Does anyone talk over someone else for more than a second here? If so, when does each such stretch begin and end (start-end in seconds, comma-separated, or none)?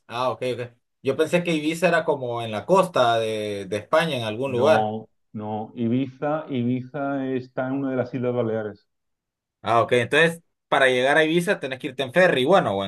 none